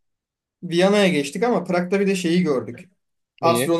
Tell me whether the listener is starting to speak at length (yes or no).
no